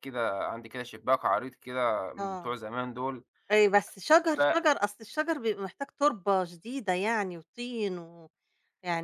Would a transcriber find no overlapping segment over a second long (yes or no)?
yes